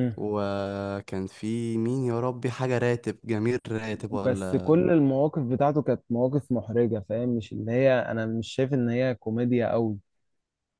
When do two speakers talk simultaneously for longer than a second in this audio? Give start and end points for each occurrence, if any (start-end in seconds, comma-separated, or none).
none